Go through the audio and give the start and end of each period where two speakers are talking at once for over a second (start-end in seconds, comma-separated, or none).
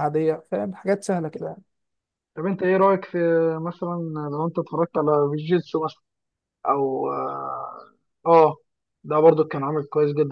none